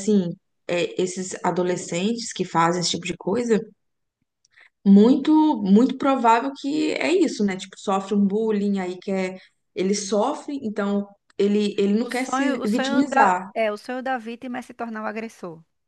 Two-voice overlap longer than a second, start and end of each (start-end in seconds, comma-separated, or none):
12.0-13.5